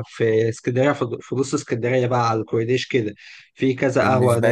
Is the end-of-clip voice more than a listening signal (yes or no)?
no